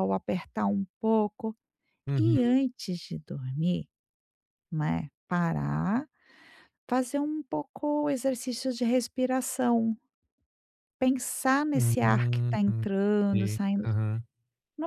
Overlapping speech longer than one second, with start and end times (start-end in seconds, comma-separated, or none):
11.7-13.8